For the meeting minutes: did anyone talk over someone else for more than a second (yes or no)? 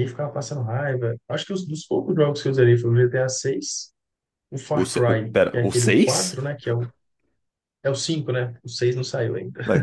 yes